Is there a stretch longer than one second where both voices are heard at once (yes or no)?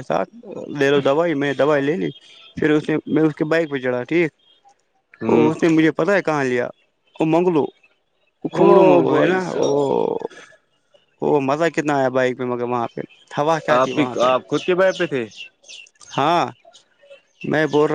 yes